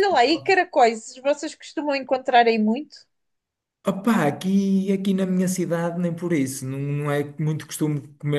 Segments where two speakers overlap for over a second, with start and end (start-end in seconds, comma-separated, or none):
none